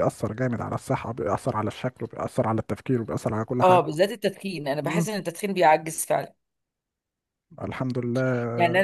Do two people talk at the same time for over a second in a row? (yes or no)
no